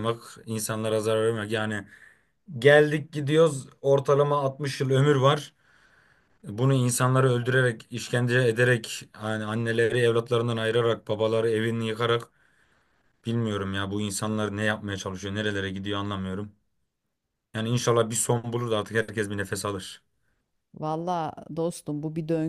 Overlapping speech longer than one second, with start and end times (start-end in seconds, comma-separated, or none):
none